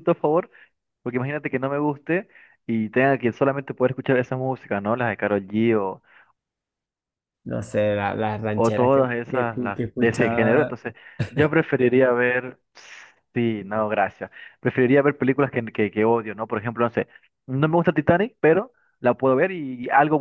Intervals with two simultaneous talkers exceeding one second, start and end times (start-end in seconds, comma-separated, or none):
8.5-10.8